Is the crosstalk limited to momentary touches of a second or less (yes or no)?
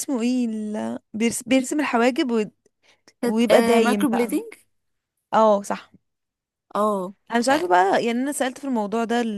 no